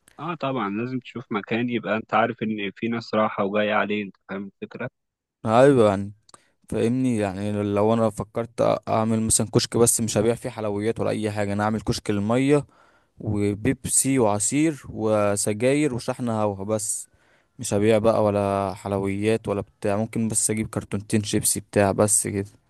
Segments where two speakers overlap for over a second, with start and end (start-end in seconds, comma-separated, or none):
none